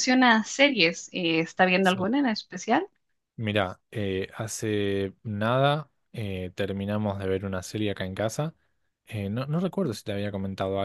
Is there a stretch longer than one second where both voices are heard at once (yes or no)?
no